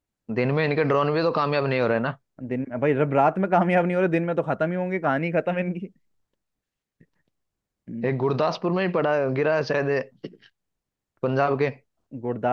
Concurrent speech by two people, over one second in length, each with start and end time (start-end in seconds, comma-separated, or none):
none